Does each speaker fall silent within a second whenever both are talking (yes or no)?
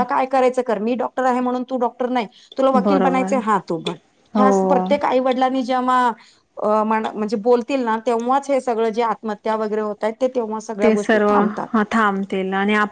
yes